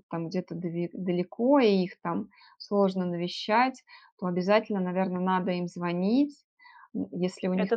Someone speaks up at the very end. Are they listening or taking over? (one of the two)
listening